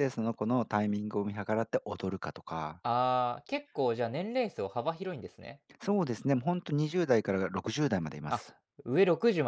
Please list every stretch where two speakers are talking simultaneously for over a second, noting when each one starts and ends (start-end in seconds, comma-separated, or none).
none